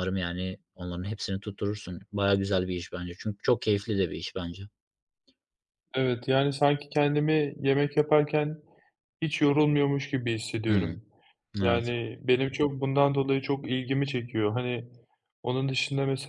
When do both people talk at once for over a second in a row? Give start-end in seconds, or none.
none